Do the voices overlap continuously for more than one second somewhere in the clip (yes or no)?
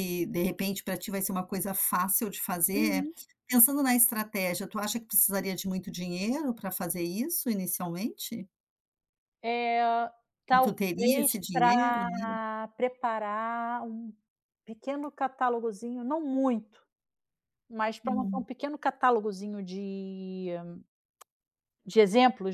yes